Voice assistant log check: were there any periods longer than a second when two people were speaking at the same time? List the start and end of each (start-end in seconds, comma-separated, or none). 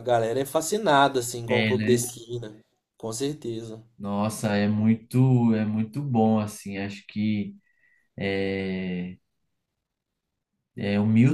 none